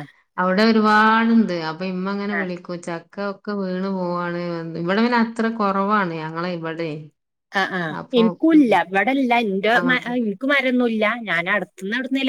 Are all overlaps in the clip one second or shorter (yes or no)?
yes